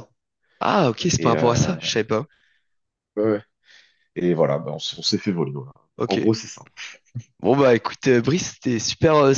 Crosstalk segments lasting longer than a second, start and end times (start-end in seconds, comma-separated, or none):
none